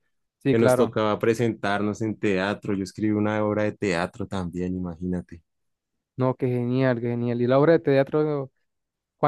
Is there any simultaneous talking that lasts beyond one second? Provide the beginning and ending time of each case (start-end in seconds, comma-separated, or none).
none